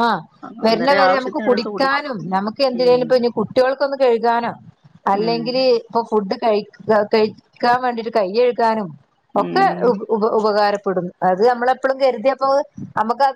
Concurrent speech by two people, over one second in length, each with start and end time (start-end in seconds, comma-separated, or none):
0.7-2.0